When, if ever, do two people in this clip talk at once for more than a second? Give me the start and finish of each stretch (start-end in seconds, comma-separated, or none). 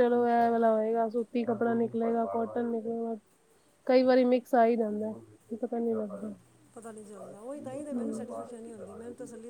none